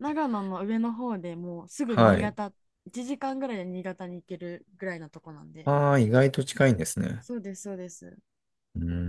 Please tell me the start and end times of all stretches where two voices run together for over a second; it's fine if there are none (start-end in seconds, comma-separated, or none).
none